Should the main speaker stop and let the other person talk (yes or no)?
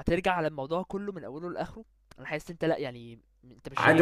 yes